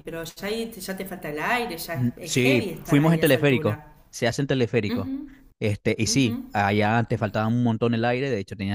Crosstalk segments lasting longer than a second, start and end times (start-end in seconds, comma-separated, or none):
1.9-3.9